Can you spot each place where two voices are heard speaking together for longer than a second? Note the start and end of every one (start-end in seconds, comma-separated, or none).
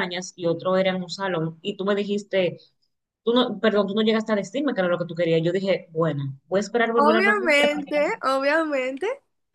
7.0-8.2